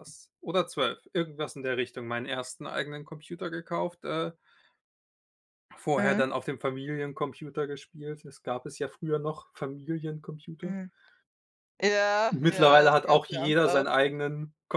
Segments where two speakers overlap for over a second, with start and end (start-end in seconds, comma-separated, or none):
12.3-13.8